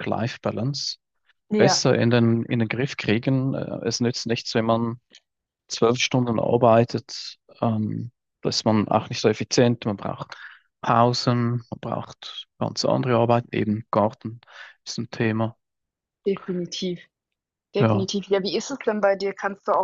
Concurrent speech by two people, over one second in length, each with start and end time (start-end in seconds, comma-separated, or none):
none